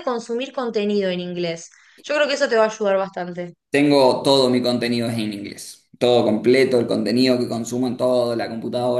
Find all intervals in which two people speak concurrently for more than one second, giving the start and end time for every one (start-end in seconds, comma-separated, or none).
none